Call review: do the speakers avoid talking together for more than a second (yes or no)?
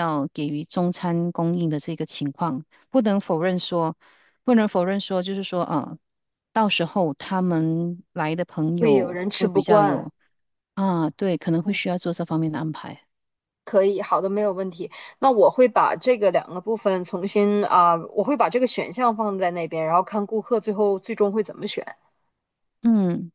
no